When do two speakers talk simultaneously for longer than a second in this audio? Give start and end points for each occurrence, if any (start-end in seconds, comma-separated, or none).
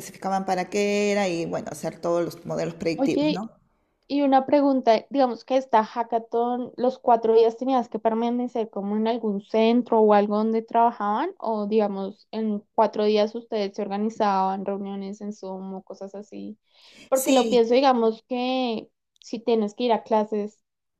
none